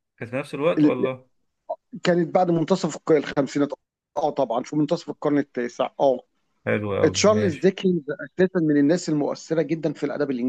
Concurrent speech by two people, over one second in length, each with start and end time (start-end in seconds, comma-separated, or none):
none